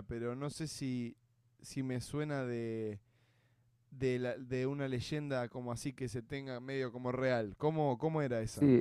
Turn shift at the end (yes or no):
yes